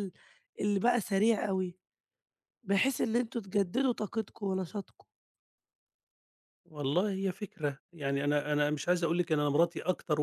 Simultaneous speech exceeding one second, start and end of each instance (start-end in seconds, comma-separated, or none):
none